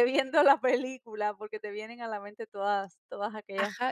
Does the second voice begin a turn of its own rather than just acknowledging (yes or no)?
yes